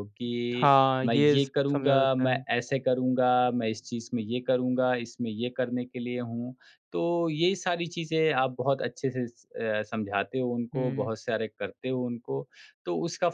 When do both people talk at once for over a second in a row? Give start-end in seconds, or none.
0.6-2.4